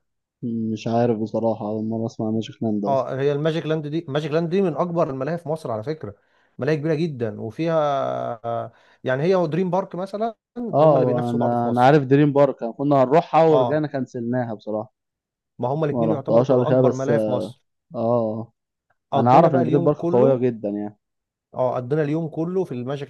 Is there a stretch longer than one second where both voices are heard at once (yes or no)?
yes